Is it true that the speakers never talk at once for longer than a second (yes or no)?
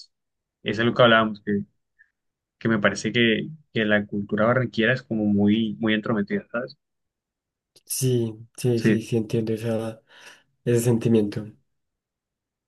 yes